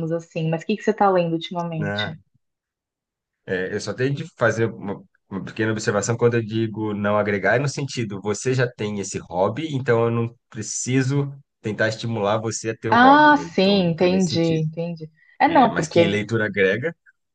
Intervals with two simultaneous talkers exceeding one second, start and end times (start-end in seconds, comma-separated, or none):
12.9-14.7